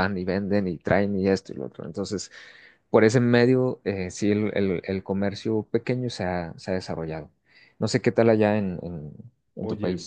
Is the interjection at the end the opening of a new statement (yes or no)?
yes